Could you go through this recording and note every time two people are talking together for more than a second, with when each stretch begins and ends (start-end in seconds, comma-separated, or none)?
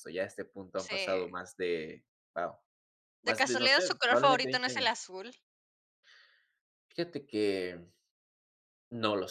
3.2-5.0